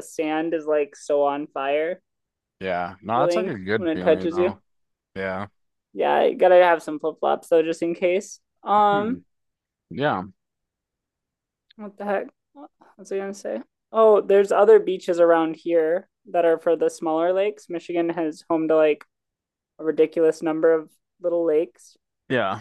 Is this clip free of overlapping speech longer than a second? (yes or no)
no